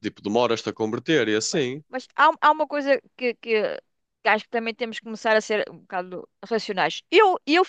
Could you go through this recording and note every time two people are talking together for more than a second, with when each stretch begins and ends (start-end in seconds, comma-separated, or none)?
none